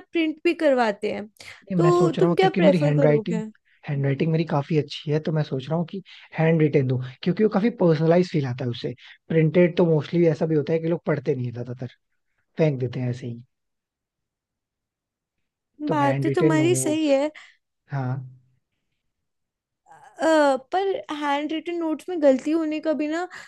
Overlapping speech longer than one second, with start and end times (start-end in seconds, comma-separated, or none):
1.8-3.4, 15.9-17.1